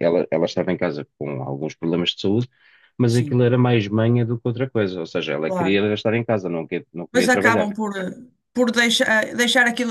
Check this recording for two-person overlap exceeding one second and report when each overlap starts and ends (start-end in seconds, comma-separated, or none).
none